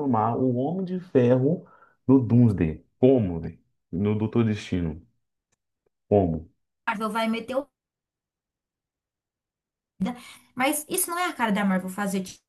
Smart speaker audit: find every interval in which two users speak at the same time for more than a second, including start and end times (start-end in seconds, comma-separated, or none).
none